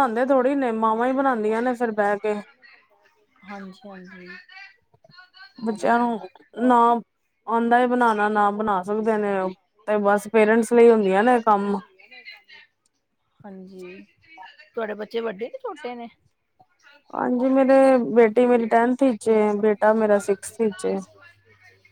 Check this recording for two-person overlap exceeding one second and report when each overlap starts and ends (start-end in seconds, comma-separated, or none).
none